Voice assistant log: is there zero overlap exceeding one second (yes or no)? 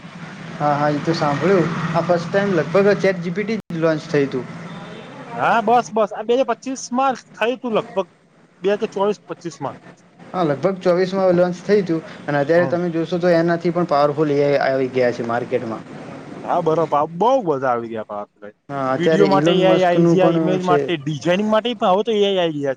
no